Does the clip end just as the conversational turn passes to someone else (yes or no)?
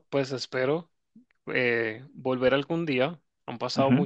no